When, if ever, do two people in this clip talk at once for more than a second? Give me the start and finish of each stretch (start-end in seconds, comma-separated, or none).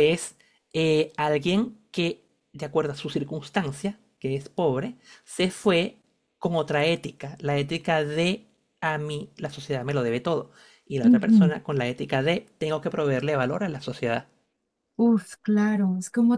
none